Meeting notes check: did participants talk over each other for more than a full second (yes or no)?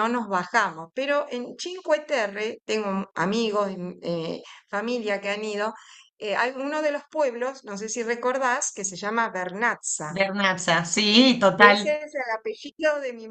no